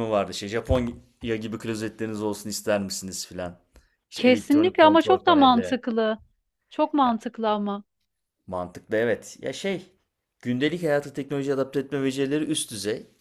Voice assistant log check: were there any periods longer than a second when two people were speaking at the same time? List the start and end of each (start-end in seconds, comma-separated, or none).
4.2-5.8